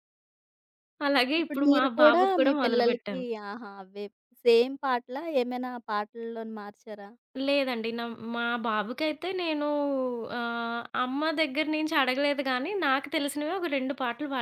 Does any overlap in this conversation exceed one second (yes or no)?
yes